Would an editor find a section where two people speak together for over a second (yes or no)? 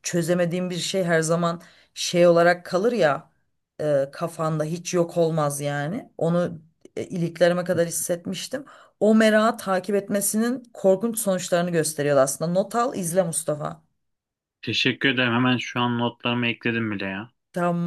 no